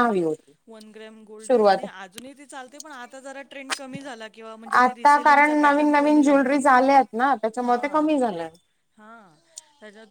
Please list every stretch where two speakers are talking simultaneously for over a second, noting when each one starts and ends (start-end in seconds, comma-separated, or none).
4.8-6.5